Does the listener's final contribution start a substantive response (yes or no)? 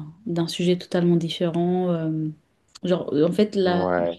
no